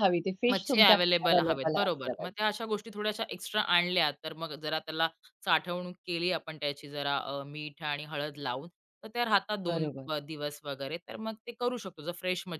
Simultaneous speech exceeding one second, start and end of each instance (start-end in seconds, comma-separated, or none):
0.5-2.4